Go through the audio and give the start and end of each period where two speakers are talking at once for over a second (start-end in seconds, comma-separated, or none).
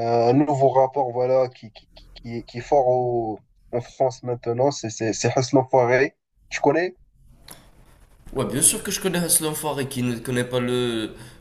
none